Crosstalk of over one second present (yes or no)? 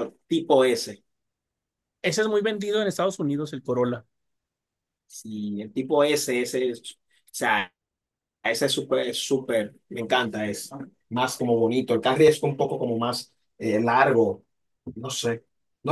no